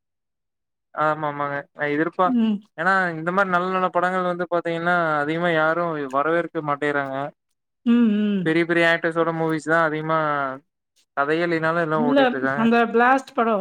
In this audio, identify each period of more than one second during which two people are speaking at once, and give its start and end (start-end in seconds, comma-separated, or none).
none